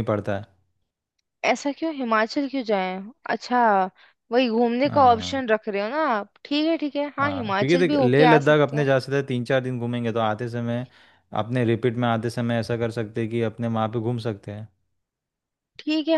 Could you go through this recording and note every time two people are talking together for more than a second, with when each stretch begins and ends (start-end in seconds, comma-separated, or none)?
7.2-8.8